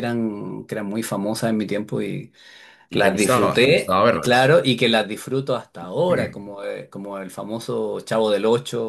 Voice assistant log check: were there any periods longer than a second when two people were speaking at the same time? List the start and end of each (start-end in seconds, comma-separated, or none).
2.9-4.5